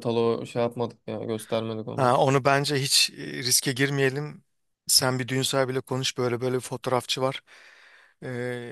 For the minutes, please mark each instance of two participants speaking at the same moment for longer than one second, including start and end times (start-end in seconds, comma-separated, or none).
none